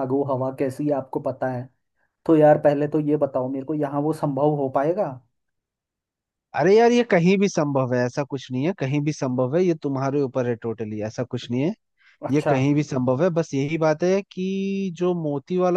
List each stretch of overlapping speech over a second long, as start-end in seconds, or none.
none